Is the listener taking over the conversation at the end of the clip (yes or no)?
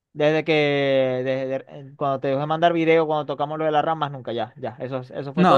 yes